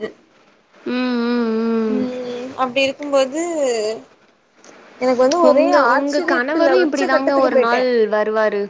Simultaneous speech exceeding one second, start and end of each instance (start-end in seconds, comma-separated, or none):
5.5-7.8